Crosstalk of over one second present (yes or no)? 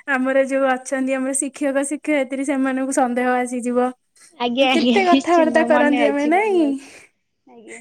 yes